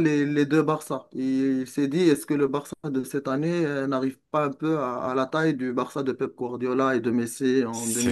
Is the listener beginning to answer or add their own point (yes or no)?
yes